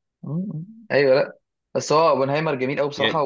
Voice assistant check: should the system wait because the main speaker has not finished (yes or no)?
yes